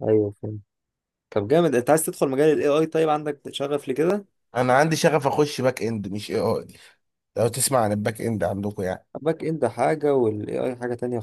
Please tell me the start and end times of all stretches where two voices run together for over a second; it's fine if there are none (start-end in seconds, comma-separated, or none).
none